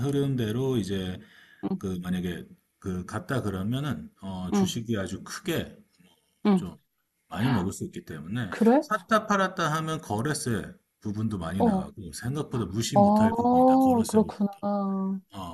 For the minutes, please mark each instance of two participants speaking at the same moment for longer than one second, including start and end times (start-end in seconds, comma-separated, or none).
12.9-14.3